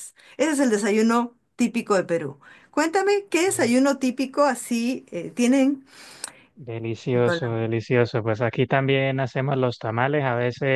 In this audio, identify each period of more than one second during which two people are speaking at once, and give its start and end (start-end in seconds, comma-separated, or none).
none